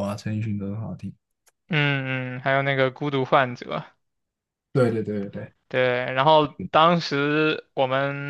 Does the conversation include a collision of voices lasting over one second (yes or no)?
no